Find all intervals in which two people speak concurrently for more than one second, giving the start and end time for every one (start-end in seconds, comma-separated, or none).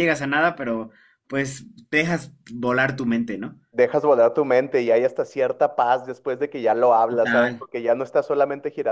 none